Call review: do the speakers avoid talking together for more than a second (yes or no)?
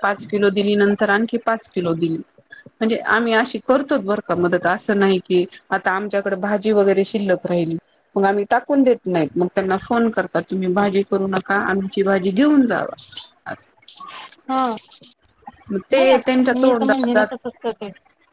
no